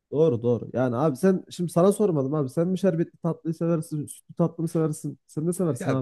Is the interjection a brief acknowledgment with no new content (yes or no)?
no